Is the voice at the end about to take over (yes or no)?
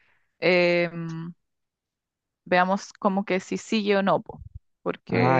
no